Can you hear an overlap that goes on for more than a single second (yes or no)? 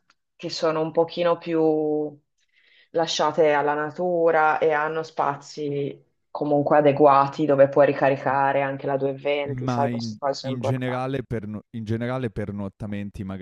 yes